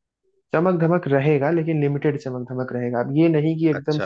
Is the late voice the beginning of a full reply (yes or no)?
no